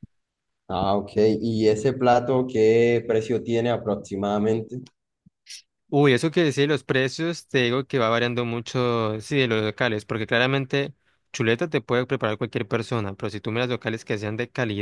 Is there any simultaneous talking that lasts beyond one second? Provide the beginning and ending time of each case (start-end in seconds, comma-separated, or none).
none